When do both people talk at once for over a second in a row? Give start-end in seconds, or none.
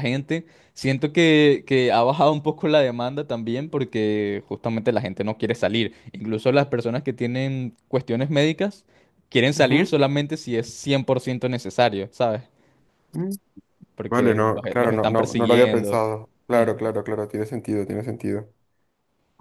14.1-16.0